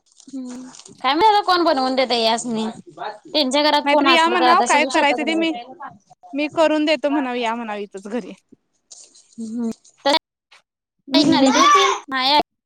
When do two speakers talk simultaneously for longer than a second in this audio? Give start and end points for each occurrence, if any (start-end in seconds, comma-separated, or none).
3.9-5.5